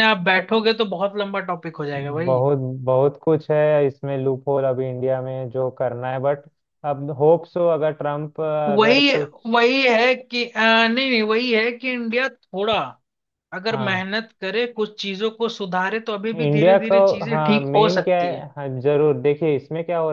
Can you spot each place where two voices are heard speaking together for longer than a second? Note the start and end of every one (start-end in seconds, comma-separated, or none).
16.4-18.4